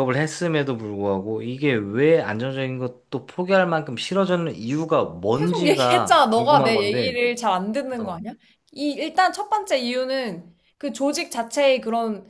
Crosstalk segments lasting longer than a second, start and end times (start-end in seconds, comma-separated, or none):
5.3-7.2